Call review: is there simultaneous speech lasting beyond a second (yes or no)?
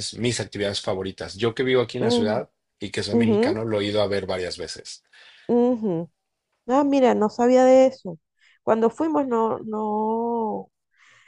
no